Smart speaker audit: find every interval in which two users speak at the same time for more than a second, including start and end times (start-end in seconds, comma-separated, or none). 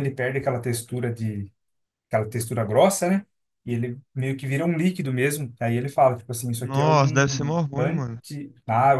6.6-8.2